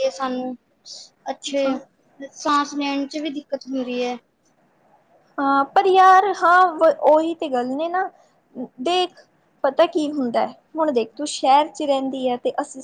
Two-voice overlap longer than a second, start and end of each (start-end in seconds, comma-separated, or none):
none